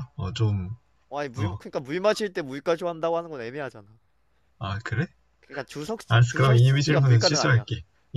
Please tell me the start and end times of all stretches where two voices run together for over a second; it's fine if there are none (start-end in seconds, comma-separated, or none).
6.1-7.7